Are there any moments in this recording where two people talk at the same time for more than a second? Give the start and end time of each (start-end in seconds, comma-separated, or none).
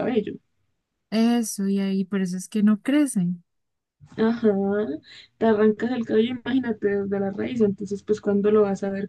none